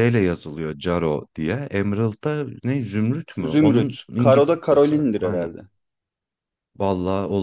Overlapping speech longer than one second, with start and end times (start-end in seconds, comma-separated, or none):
3.4-5.5